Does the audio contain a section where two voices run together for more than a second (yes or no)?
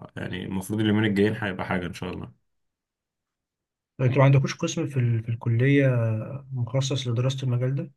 no